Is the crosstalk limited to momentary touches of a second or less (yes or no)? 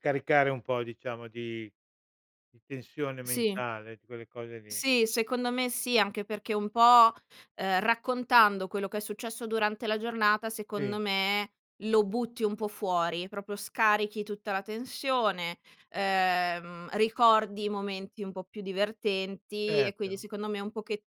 yes